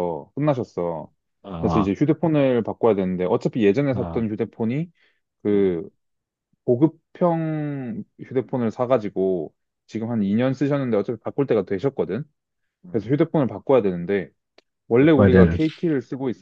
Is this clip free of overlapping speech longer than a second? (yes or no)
yes